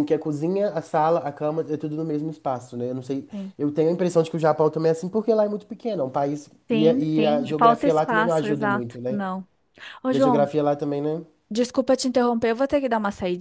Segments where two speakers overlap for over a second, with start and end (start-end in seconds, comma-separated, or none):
6.7-9.2